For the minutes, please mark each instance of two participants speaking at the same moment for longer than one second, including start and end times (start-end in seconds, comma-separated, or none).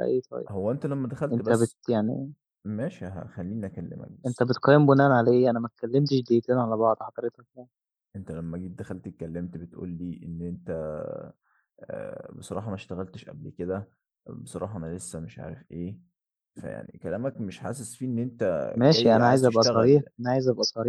18.7-20.0